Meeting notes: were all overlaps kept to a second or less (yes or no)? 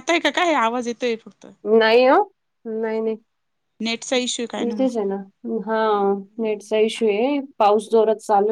yes